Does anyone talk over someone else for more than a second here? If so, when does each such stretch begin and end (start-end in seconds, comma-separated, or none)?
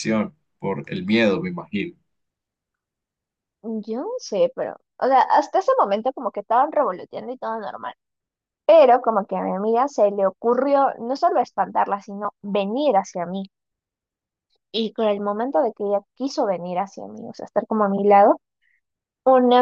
none